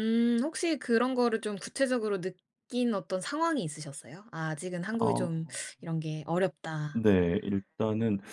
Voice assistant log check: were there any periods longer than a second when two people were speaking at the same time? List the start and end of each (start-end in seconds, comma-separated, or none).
none